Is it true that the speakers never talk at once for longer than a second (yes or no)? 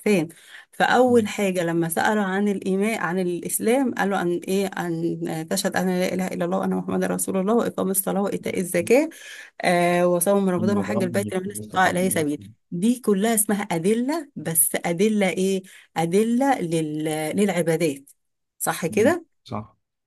no